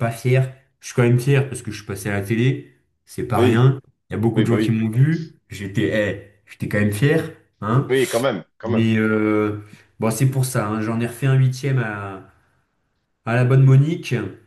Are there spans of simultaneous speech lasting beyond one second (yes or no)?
no